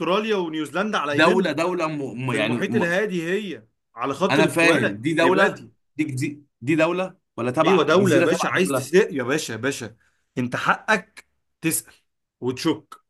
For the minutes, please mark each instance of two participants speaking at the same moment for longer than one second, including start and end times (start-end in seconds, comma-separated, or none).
4.3-5.7, 7.6-8.9